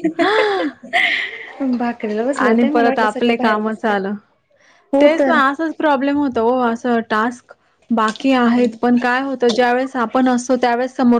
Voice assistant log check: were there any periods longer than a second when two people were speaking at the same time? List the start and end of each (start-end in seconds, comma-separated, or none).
2.4-3.9